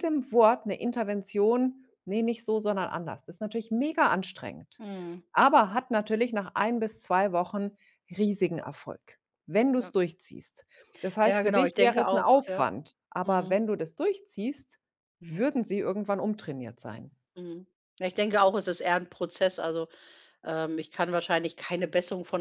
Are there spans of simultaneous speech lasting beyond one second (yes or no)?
yes